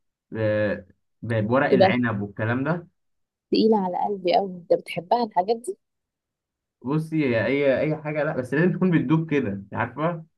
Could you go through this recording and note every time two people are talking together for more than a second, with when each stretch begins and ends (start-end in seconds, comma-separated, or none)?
none